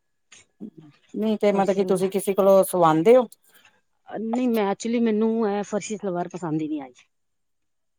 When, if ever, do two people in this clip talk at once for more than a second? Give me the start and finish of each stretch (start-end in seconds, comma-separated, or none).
none